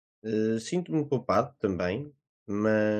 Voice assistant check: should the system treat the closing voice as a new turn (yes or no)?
yes